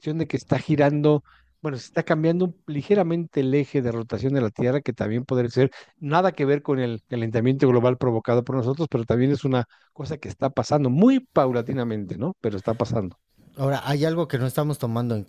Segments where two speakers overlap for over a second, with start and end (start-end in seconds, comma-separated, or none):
none